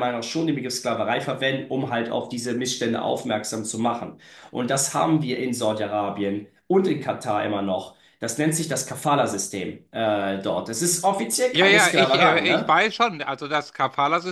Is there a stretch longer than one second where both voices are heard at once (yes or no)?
yes